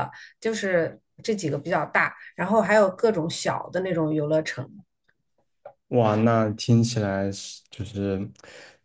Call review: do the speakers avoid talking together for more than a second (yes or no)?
yes